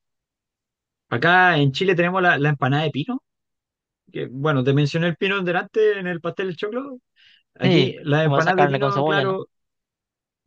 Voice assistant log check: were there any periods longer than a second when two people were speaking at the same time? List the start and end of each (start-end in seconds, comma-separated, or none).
7.6-9.4